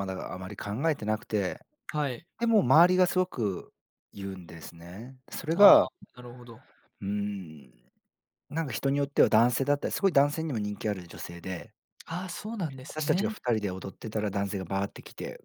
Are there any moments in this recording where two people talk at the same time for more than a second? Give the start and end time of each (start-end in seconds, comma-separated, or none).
none